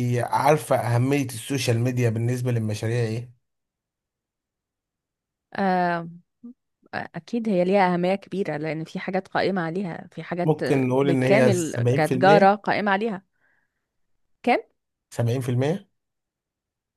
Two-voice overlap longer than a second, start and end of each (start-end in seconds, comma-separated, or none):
10.4-12.5